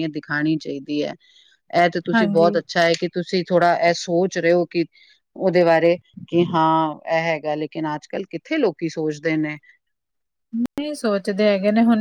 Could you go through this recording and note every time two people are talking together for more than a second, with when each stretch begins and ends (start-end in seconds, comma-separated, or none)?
none